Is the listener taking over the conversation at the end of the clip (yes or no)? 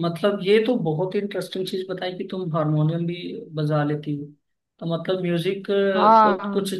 no